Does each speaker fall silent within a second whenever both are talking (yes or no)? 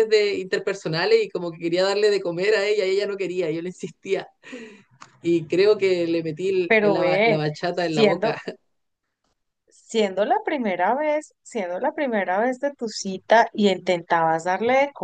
no